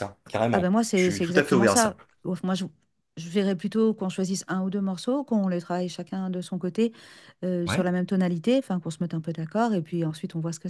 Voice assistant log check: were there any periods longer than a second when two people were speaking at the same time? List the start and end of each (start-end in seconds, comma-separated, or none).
0.5-2.0